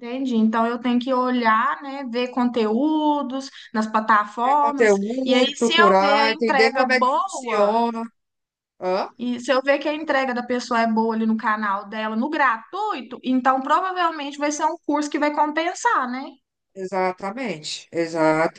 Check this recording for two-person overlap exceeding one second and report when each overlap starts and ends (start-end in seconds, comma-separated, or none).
4.4-7.7